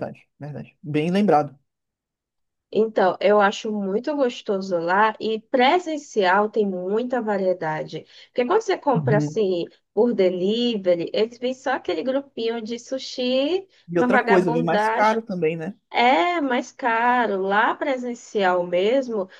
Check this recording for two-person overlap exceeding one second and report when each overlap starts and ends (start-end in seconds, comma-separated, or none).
13.9-15.2